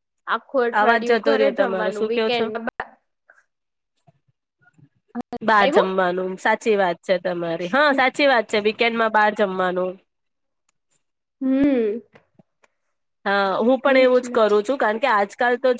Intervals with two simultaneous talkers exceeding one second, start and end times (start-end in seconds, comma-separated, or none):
0.8-2.5